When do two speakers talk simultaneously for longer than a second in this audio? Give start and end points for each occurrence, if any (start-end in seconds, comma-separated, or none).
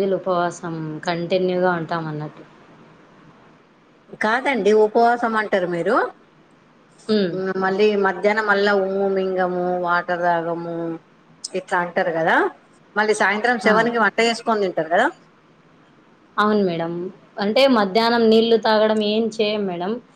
none